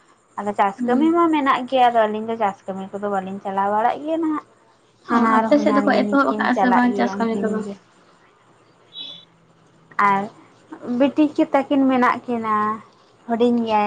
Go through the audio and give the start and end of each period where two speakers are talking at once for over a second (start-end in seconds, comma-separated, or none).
5.1-7.6